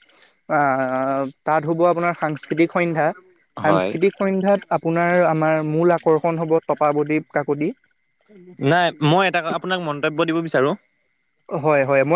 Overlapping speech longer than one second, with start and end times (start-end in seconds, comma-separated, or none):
none